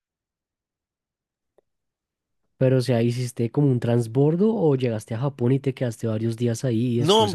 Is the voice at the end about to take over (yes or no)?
yes